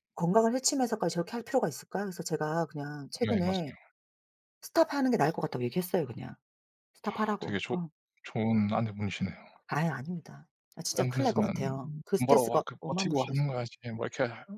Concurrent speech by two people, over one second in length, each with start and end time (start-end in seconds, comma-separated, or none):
12.2-13.5